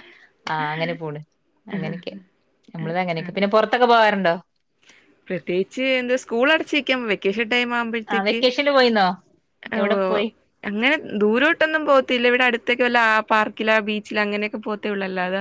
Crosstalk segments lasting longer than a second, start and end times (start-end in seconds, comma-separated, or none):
none